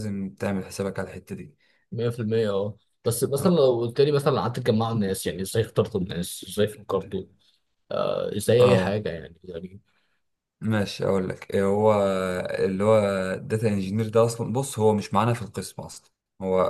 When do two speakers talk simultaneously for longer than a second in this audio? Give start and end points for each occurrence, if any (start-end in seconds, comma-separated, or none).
none